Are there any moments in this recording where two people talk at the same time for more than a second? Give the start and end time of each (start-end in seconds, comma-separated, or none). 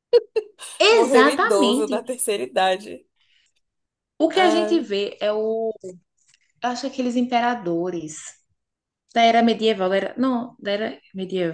0.9-2.2